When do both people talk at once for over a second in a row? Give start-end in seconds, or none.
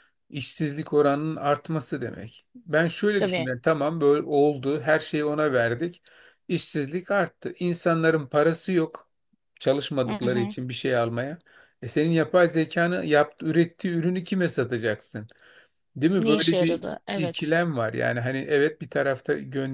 16.2-17.5